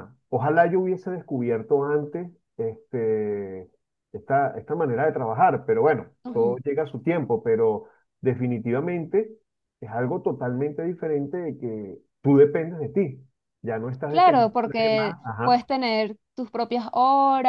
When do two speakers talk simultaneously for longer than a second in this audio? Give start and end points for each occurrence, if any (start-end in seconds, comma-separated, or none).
14.1-15.7